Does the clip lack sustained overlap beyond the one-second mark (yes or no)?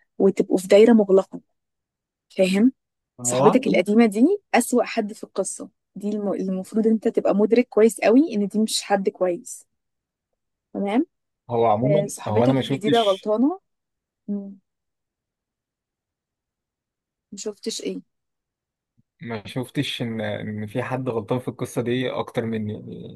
no